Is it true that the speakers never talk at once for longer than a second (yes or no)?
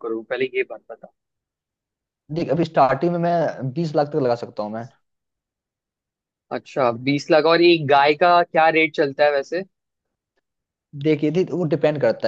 yes